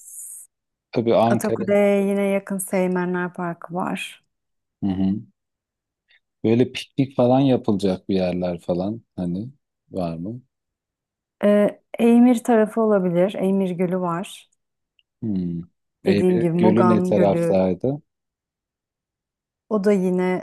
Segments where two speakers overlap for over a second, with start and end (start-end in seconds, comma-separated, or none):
16.0-17.6